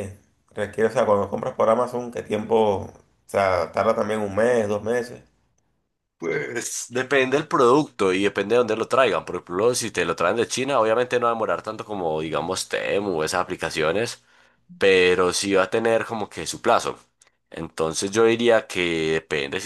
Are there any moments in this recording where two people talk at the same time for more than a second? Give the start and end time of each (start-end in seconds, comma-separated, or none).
none